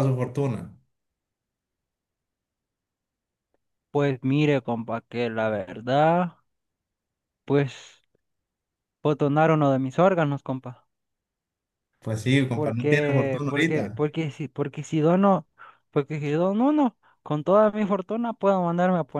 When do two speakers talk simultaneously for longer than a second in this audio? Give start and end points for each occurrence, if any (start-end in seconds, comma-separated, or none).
12.5-14.0